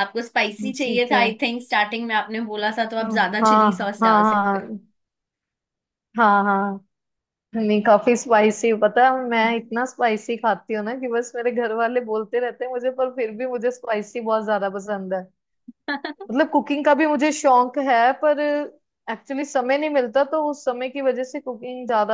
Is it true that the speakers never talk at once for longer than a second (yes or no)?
no